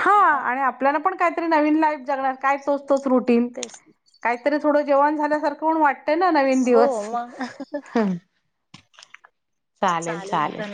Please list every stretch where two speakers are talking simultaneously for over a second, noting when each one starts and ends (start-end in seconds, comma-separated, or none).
none